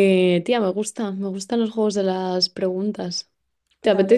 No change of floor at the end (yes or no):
no